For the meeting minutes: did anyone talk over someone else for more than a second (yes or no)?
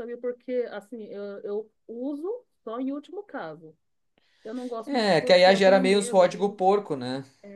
yes